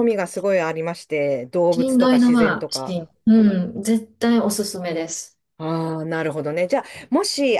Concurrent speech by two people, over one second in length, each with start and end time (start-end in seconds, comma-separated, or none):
1.7-3.0